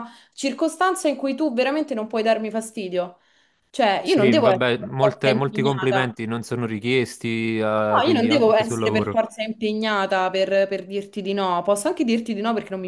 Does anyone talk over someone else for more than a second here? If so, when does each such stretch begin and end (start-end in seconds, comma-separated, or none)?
4.0-6.2, 7.9-9.2